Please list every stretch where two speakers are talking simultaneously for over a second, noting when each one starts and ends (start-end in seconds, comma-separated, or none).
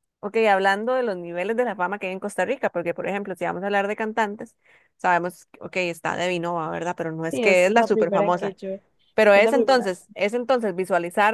7.3-8.6